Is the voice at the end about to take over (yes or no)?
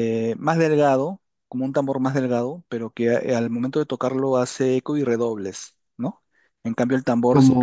no